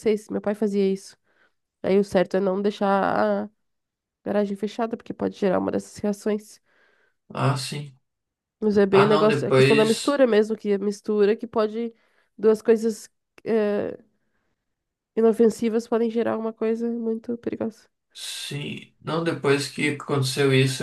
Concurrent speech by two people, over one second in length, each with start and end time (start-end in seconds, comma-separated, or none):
8.9-10.2